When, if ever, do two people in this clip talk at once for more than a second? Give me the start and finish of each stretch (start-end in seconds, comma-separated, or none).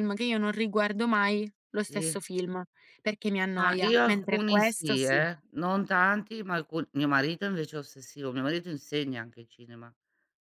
3.5-5.2